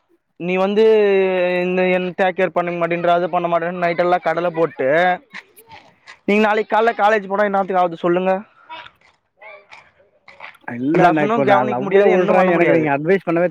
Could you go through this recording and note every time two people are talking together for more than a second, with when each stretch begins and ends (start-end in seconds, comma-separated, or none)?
11.0-12.8